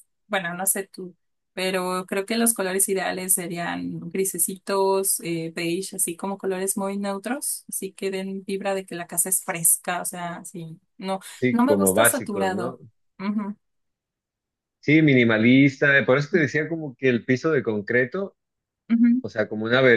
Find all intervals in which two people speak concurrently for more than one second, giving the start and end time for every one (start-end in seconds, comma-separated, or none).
11.3-12.8